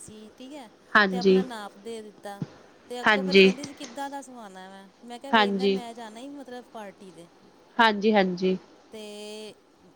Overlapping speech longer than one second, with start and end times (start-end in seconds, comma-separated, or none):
none